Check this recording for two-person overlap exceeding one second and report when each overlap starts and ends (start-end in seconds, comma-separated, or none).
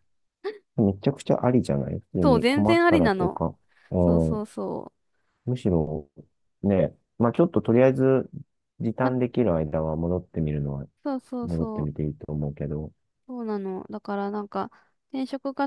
2.2-3.4